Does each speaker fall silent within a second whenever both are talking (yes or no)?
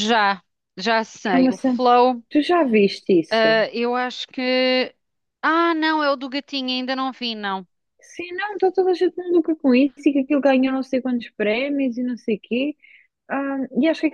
yes